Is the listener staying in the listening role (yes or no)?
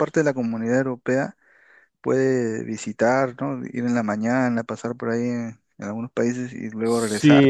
no